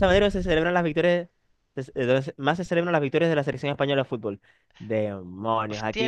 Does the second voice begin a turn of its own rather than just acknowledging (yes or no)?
yes